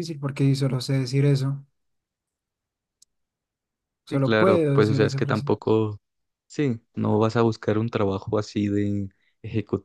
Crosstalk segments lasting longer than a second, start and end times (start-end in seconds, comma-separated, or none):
4.1-5.5